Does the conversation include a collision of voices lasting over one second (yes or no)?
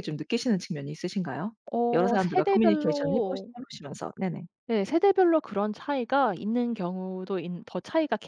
yes